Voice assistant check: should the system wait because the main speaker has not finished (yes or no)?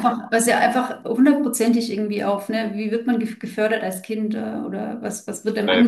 no